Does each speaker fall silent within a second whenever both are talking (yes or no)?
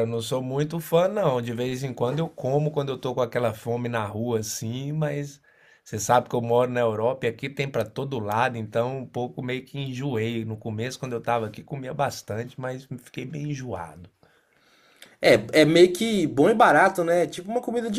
yes